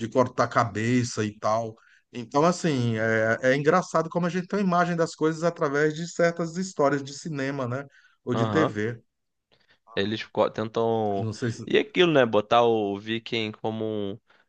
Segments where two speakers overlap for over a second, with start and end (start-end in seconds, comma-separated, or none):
none